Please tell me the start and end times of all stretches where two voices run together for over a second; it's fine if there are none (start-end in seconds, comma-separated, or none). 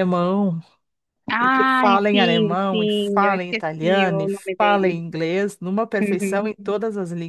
1.4-5.0